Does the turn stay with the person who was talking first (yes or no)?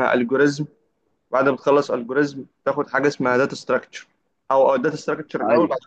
yes